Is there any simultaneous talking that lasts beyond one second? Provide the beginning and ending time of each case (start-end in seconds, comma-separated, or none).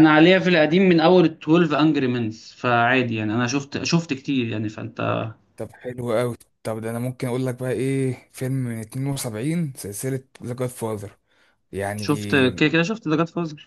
none